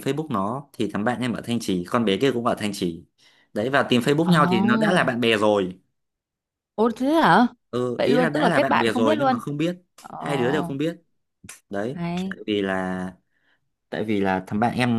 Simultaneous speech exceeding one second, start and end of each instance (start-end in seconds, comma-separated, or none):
8.0-9.4